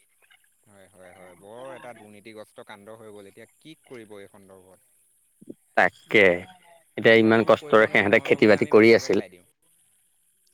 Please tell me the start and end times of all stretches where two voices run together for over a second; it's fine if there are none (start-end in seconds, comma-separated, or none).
7.1-9.3